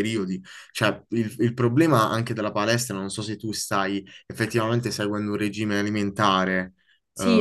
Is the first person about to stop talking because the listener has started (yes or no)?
yes